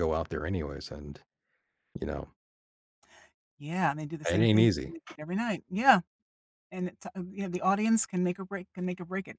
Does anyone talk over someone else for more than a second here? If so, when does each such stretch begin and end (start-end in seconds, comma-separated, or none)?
none